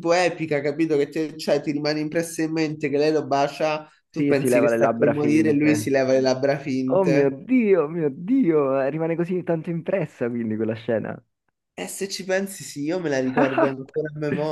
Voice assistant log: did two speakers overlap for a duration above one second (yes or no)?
yes